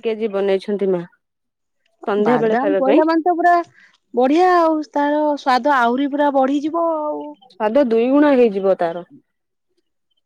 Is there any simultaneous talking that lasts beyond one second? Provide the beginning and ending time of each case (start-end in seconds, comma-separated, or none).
none